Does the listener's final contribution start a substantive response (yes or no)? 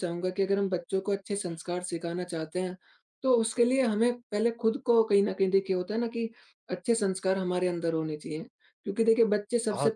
no